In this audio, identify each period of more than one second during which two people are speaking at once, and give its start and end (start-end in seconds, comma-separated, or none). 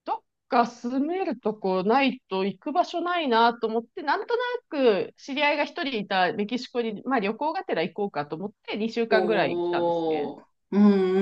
9.1-10.3